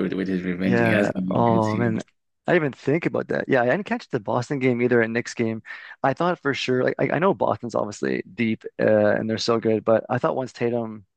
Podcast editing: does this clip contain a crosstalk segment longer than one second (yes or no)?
yes